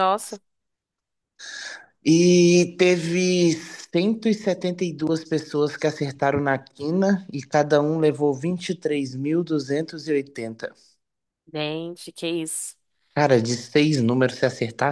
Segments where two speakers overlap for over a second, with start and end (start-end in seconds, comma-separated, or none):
none